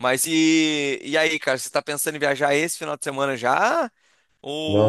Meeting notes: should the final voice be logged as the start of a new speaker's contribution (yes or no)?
yes